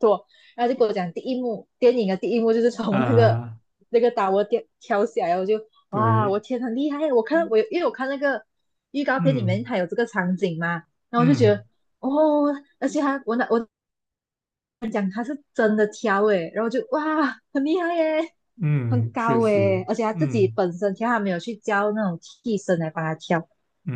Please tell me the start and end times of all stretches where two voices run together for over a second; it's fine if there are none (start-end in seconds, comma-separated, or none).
18.9-20.6